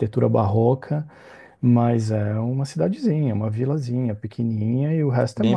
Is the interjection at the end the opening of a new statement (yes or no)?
no